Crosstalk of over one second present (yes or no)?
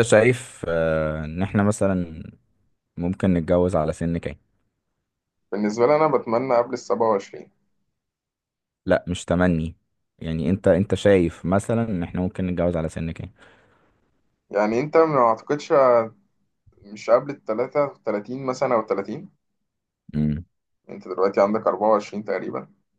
no